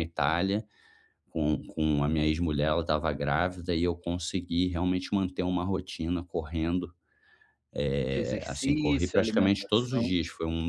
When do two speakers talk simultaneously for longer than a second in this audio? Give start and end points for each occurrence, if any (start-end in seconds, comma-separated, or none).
8.0-10.2